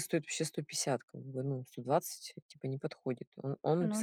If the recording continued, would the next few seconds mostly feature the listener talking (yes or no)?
no